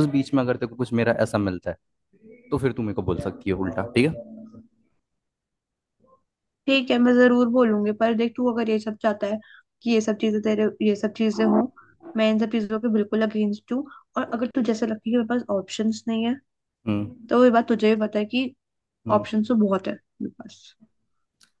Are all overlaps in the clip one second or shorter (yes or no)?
yes